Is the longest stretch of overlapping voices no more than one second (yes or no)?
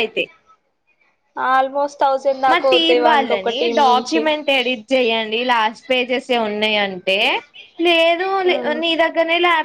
no